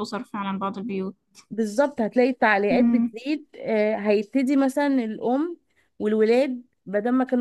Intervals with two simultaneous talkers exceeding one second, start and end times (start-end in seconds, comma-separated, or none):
none